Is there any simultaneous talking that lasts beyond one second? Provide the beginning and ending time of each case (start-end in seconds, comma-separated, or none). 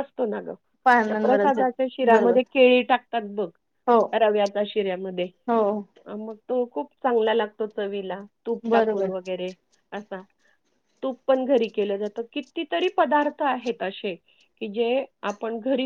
1.1-2.4